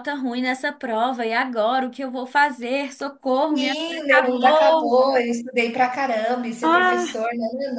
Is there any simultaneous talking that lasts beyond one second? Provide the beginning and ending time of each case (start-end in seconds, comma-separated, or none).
3.5-5.0